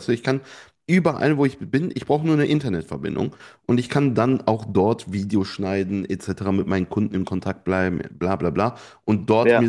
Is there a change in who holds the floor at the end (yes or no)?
no